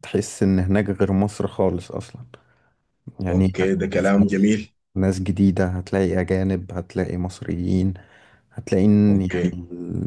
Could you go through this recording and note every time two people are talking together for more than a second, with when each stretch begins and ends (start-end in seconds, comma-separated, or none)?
3.3-4.5